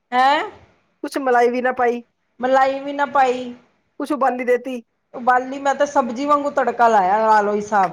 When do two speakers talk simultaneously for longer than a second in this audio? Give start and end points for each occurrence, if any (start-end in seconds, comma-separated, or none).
none